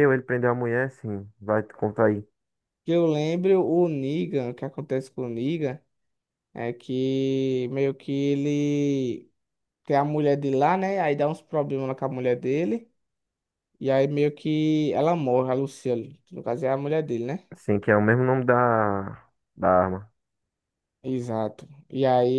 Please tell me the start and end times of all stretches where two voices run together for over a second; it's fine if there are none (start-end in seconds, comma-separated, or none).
none